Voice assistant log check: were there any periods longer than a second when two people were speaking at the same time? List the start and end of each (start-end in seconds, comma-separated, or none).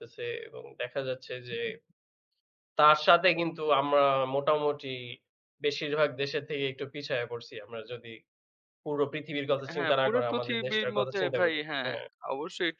9.8-11.9